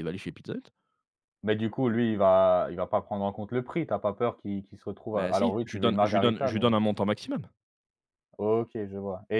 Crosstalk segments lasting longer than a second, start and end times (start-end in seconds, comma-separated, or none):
5.1-6.8